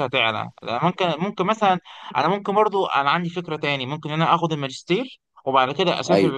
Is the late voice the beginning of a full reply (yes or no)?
no